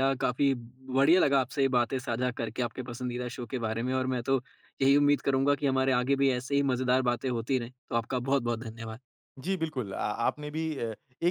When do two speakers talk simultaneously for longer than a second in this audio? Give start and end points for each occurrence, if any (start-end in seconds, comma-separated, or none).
none